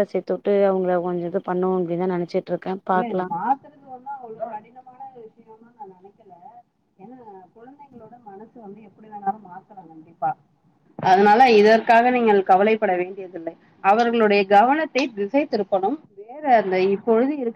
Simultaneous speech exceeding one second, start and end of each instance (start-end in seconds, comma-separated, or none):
none